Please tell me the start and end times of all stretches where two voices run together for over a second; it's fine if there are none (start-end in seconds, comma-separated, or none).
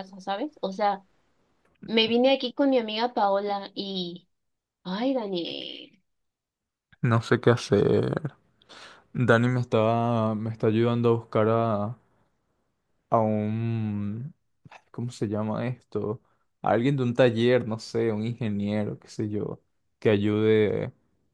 none